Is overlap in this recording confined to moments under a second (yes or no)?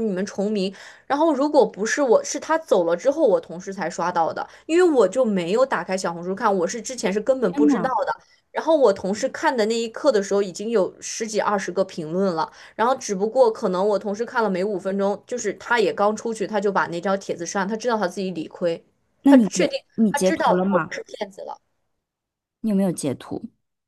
no